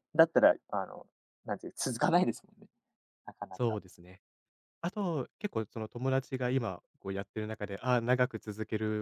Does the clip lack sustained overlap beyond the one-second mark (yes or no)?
yes